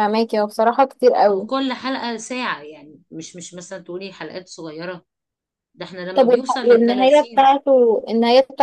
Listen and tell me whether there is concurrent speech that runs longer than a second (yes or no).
yes